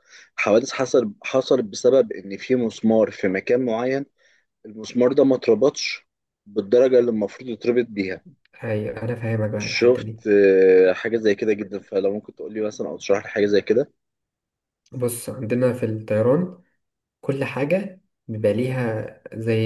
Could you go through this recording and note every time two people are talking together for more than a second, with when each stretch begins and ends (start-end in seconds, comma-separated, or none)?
none